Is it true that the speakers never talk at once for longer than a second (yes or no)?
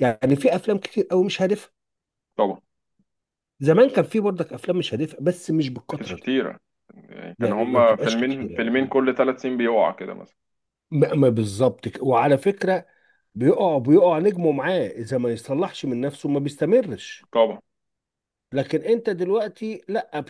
no